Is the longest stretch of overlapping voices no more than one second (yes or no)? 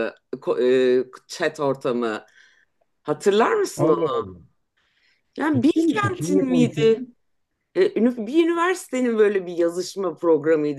no